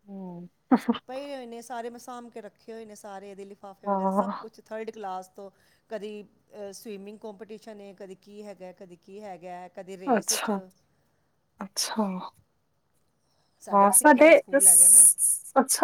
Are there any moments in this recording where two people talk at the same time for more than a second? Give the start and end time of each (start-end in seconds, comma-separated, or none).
13.7-15.1